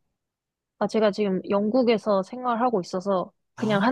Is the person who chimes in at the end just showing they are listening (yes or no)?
yes